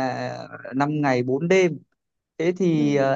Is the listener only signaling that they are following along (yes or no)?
yes